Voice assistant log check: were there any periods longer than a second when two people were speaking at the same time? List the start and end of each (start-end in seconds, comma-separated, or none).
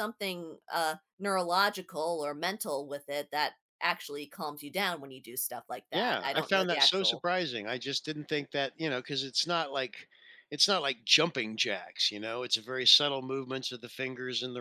5.9-7.2